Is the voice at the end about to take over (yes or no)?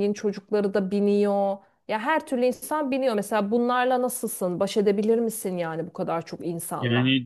yes